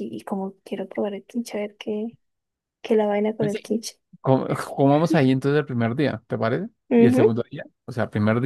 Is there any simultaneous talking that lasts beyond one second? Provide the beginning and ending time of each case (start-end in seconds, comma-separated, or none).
none